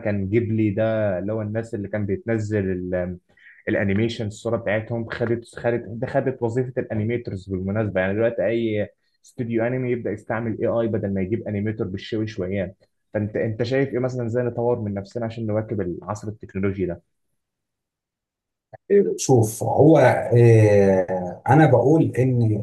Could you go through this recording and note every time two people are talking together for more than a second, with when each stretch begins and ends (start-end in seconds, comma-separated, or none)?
none